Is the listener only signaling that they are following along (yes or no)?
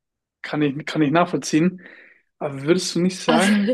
yes